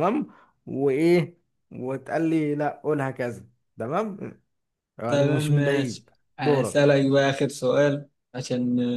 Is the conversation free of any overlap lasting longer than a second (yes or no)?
no